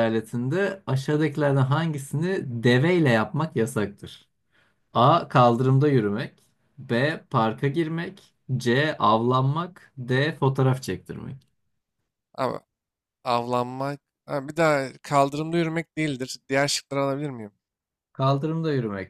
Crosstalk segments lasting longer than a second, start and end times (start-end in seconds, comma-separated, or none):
none